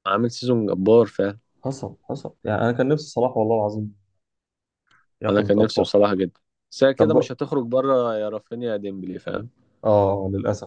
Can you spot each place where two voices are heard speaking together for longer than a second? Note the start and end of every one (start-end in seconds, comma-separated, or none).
none